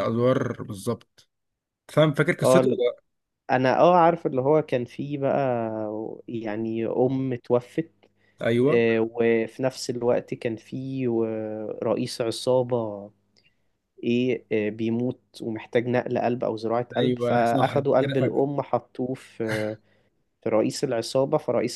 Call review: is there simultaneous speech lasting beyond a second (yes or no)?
yes